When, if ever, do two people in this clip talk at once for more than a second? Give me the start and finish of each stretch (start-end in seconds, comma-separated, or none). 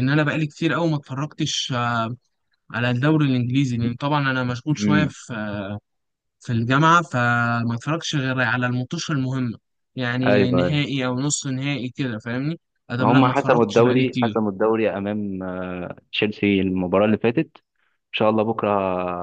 13.0-14.4